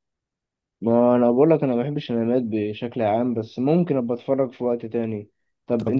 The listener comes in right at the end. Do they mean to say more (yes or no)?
no